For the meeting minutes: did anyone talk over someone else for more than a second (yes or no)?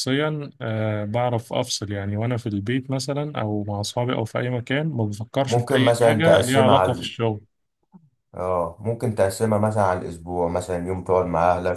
yes